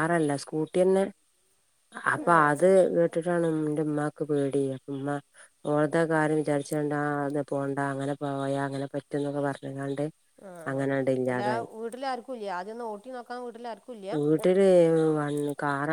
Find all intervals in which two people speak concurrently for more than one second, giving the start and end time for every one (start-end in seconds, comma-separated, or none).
none